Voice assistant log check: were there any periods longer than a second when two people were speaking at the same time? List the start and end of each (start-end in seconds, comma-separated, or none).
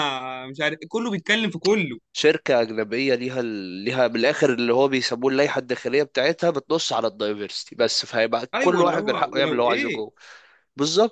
8.5-10.1